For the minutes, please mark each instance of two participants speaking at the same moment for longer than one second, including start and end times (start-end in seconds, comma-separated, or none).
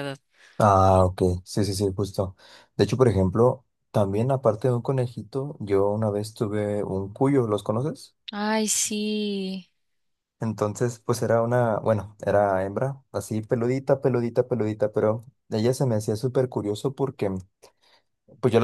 none